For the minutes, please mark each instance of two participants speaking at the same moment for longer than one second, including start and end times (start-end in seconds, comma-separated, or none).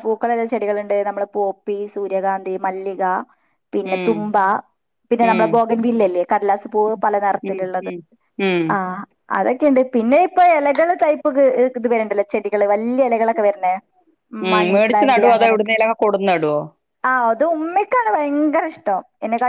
none